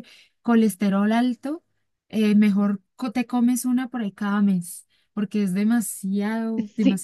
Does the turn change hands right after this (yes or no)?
yes